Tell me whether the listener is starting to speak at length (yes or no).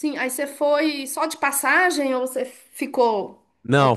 yes